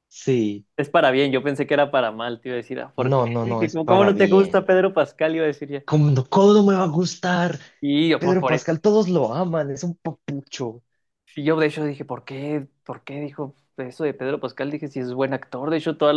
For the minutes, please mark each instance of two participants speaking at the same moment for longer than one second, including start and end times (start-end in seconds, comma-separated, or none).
3.1-4.7